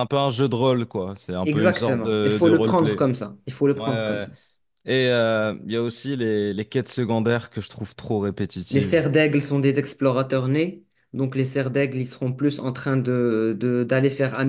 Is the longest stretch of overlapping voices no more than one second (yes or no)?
no